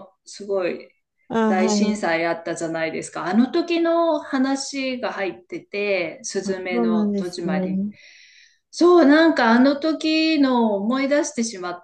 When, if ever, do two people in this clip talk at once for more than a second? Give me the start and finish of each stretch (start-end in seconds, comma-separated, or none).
6.4-7.8